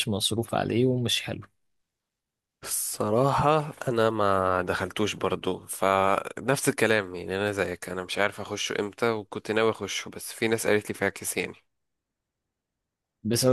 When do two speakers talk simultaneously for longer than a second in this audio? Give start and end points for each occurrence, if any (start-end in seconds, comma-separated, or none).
none